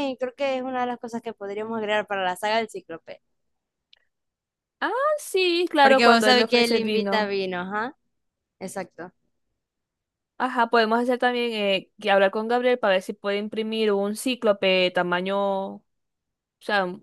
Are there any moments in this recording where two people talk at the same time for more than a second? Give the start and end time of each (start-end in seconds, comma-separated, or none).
5.8-7.3